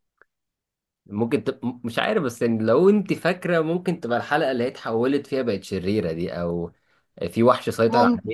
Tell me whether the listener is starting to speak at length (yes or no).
no